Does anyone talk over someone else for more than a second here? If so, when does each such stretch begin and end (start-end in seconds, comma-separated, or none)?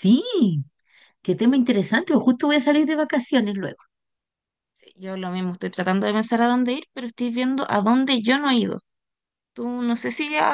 none